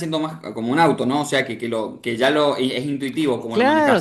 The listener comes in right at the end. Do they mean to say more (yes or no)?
yes